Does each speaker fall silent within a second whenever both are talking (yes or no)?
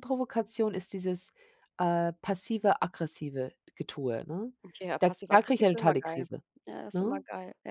no